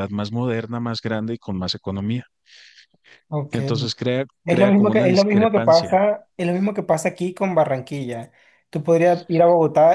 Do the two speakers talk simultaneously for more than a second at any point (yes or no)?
yes